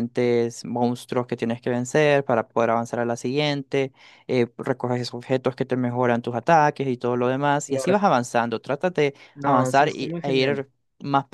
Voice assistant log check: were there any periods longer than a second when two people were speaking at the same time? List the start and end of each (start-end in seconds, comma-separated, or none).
9.3-10.6